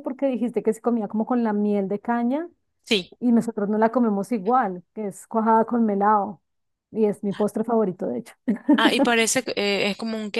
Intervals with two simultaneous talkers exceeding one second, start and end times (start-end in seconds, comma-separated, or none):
none